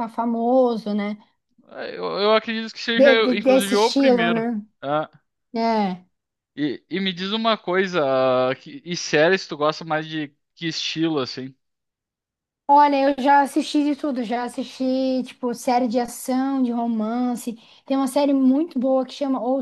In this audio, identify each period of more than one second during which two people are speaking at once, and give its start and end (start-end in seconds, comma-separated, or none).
2.9-4.5